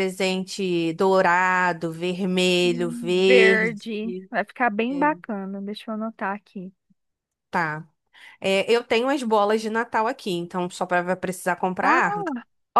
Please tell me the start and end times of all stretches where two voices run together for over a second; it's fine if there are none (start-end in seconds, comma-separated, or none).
2.6-3.9